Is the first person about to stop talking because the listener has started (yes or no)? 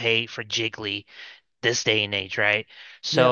no